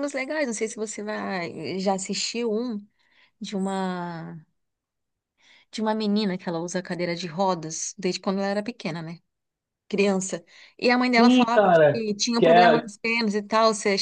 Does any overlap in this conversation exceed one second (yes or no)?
yes